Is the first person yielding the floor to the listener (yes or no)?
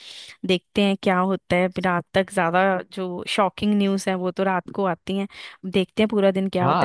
yes